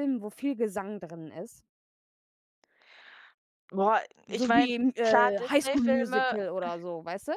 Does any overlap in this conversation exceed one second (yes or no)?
yes